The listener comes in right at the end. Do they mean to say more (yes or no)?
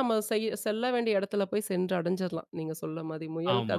yes